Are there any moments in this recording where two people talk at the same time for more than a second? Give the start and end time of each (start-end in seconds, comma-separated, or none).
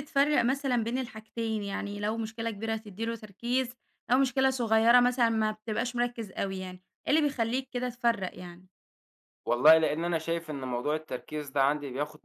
none